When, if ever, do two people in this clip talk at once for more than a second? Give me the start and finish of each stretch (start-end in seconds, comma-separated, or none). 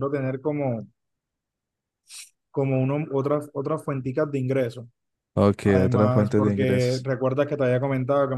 5.7-7.1